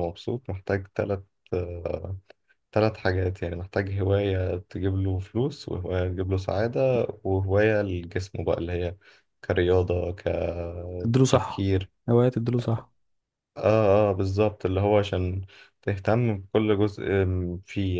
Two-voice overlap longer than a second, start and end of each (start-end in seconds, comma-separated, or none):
none